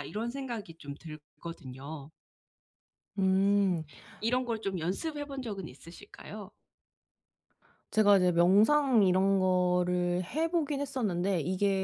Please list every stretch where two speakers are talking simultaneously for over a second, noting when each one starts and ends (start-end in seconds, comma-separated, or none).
none